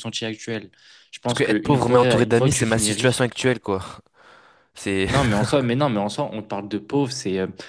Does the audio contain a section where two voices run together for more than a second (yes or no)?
yes